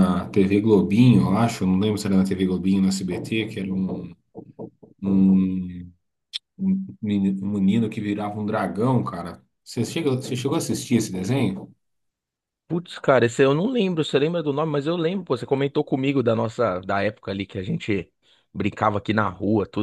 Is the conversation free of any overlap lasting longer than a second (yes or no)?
yes